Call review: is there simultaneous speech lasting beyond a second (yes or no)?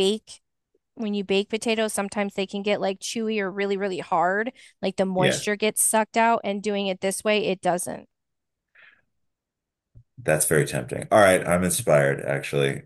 no